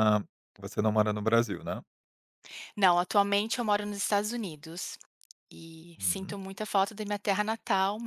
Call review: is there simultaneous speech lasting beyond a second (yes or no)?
no